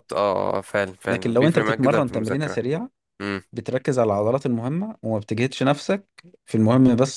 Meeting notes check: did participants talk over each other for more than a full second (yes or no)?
yes